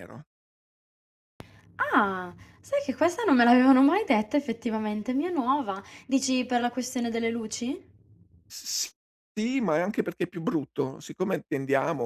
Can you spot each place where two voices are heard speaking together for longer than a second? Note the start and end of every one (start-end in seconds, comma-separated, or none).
none